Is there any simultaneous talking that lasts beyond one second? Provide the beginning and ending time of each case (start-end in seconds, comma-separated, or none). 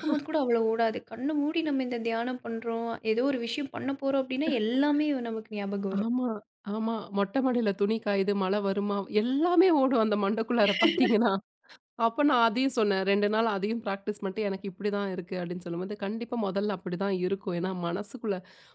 none